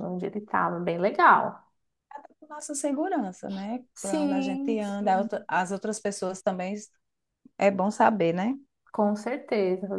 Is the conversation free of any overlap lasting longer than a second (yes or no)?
no